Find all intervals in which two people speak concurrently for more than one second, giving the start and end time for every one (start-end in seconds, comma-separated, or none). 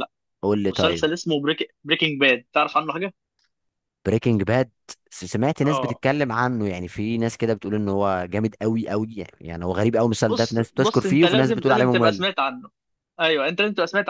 10.2-12.2